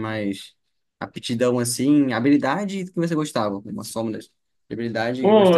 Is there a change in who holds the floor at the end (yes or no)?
yes